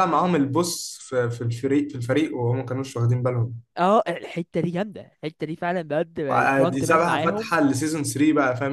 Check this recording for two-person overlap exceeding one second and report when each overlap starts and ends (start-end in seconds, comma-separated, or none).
6.3-7.5